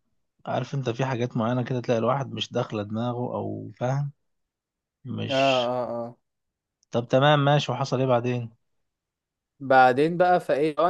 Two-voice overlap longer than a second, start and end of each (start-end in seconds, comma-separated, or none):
none